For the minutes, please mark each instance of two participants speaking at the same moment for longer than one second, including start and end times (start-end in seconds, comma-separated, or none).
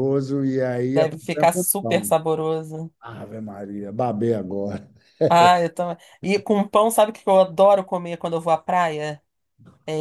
0.9-2.1